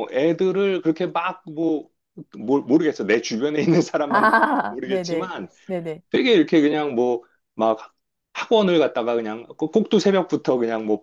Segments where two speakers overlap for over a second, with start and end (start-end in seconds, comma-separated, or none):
4.1-5.5